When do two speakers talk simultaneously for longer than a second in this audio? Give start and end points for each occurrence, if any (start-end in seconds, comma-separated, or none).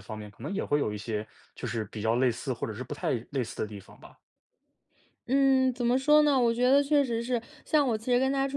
none